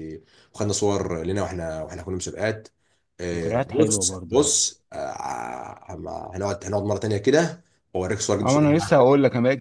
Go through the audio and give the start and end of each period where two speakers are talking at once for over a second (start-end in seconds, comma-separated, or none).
3.4-4.6